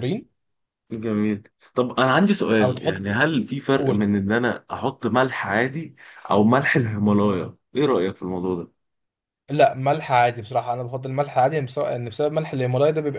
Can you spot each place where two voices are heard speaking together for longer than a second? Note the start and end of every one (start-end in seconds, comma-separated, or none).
none